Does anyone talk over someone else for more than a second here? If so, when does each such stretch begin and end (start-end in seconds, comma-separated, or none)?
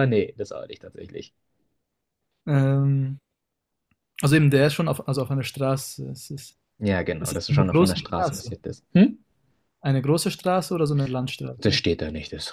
7.2-8.6